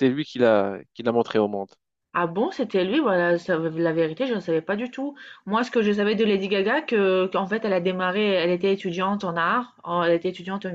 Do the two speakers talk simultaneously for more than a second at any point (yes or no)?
no